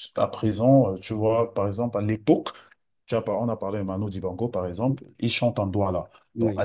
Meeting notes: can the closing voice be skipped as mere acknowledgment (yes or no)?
yes